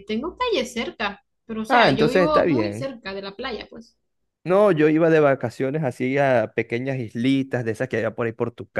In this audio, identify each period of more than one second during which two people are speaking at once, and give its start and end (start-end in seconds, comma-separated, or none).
1.7-2.9